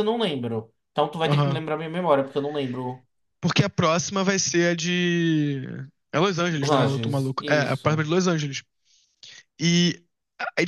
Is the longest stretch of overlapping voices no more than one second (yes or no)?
no